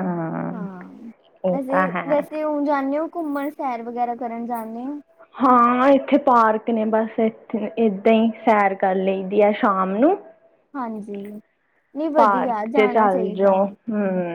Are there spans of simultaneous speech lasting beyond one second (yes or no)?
yes